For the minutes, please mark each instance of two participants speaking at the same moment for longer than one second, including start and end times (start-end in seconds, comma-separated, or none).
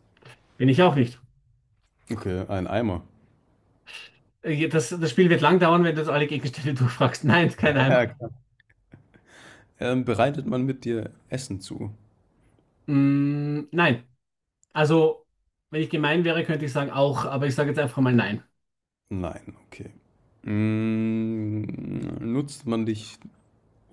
none